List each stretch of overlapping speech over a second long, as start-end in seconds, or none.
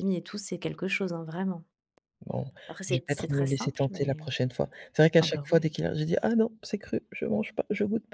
2.9-4.3